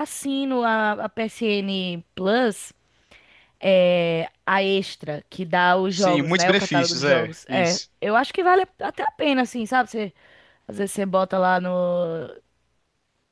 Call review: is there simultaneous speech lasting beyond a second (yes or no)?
yes